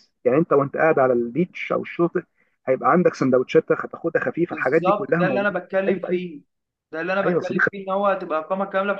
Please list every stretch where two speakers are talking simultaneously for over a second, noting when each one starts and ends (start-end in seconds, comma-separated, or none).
4.5-6.2